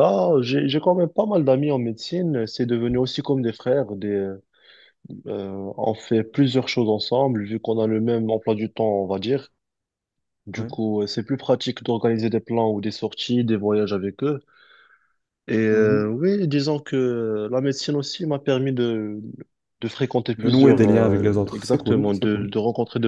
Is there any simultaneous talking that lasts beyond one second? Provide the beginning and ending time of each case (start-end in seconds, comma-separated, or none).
20.4-22.5